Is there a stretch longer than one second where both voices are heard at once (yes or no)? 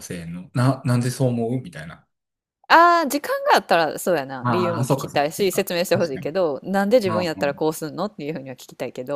yes